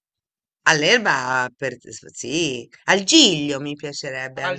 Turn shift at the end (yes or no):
yes